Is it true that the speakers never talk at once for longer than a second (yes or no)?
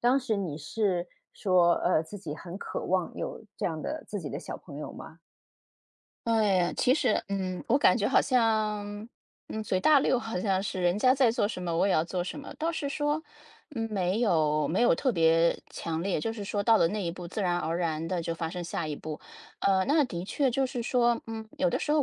yes